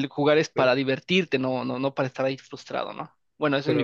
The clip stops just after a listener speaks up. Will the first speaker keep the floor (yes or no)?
no